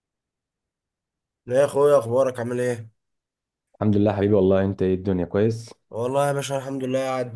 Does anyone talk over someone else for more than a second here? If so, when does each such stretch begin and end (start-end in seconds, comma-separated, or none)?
none